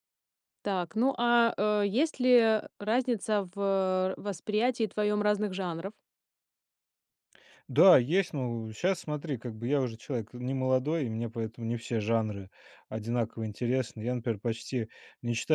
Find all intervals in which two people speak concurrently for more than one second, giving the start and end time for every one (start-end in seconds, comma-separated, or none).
none